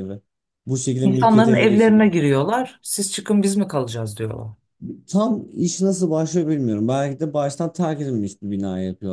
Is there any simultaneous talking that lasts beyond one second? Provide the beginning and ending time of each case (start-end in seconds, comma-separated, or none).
1.0-2.6